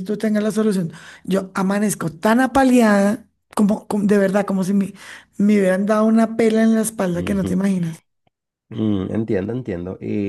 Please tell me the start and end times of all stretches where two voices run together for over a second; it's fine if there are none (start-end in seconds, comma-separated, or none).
none